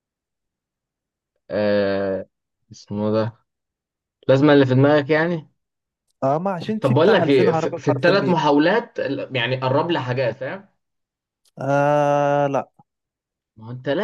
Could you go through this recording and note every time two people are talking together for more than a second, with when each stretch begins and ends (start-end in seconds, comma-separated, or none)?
6.8-8.4